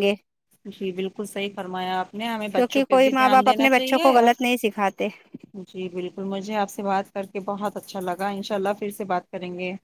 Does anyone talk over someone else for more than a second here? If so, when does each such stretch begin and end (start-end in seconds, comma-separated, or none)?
2.5-4.3